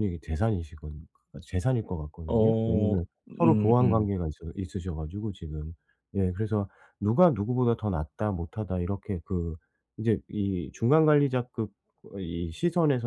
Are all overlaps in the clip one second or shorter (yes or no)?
no